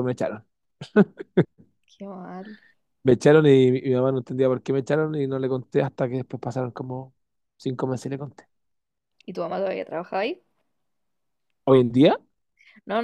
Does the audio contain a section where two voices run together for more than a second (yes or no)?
no